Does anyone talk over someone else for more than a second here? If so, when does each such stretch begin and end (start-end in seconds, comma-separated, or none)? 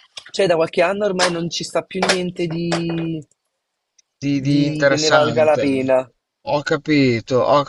4.5-6.0